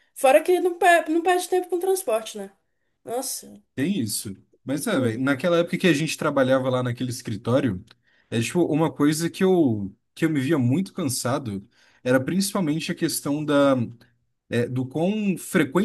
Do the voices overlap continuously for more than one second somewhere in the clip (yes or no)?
no